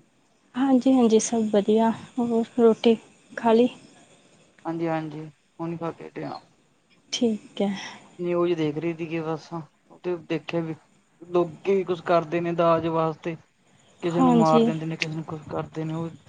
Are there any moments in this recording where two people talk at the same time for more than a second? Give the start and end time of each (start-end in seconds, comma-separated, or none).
none